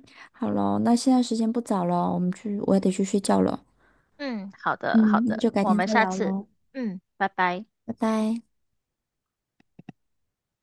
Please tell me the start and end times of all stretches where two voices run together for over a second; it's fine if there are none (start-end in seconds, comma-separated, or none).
4.9-6.3